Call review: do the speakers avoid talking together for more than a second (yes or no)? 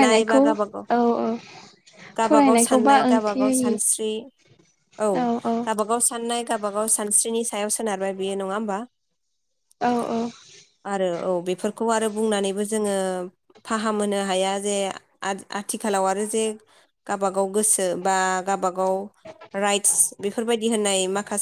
no